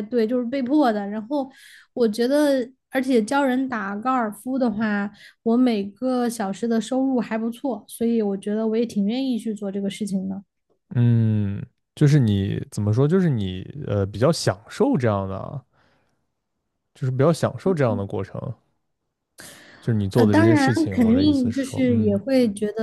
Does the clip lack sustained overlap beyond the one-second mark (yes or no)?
no